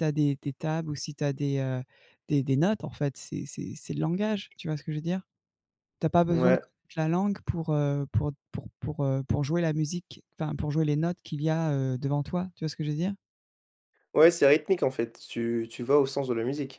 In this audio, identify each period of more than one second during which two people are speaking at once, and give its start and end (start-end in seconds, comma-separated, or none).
none